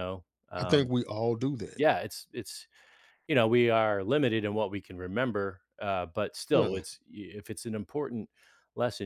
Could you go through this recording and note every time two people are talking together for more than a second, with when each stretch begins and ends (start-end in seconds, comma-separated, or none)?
none